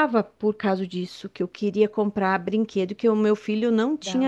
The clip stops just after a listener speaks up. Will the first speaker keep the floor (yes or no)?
yes